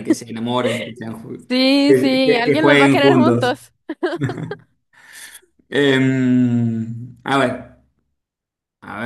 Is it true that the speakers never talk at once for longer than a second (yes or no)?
no